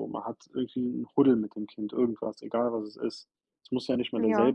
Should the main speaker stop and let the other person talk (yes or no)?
no